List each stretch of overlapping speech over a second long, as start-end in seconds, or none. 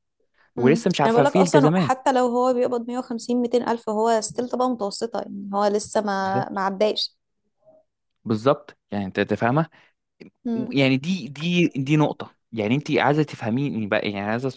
0.6-1.9